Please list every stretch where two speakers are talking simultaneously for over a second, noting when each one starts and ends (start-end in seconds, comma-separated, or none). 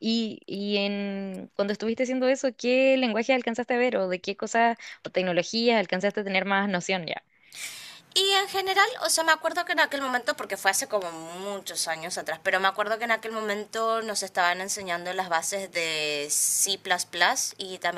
none